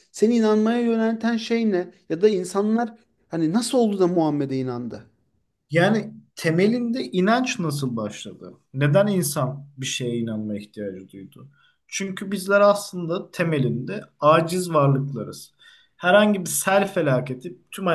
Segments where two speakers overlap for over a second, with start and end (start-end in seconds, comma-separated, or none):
none